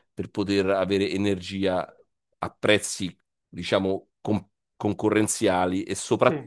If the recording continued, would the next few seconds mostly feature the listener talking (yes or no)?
no